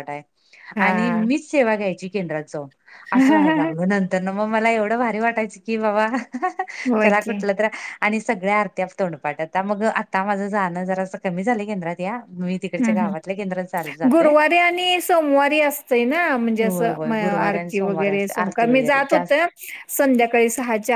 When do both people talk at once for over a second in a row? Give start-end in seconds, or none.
16.7-19.4